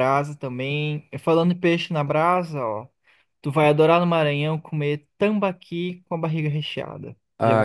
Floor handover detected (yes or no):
yes